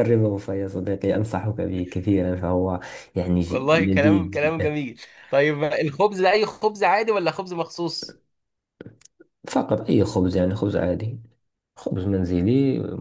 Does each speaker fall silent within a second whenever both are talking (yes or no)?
no